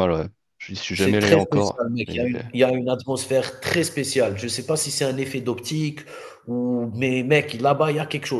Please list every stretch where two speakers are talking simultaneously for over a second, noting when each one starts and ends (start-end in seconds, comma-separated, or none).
0.9-2.3